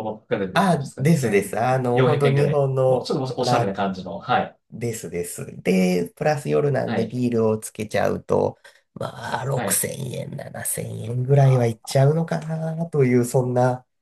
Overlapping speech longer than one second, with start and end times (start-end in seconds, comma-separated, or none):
0.5-3.8